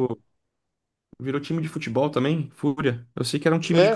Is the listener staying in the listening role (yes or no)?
no